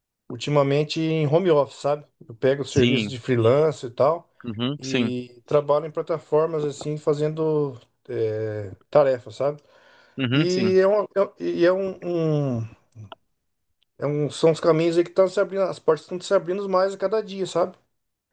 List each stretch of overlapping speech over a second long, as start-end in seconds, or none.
none